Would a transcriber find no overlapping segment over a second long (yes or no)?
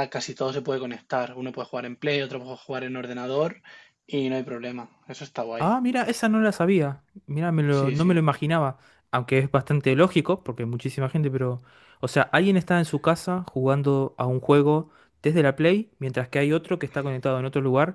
yes